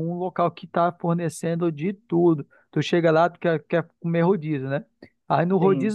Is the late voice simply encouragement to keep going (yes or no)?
yes